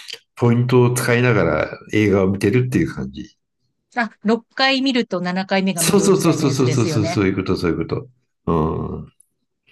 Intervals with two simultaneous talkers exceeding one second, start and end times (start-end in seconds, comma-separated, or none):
5.7-7.2